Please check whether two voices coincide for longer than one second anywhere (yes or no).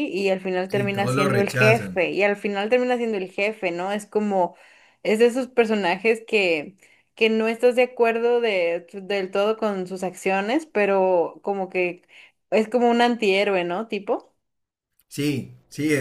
yes